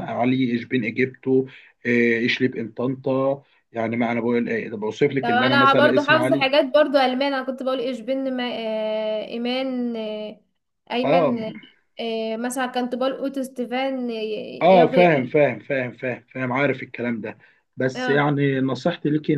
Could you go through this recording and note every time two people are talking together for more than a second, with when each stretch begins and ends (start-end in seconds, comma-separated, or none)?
5.2-6.5